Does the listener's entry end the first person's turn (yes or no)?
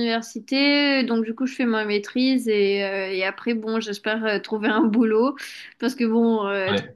no